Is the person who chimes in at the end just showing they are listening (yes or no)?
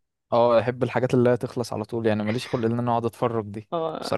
no